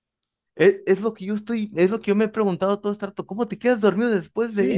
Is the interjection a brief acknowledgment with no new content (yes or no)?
no